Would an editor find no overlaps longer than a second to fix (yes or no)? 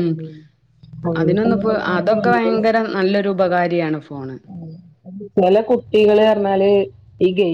no